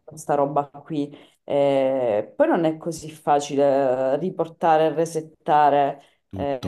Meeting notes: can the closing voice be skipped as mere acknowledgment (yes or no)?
yes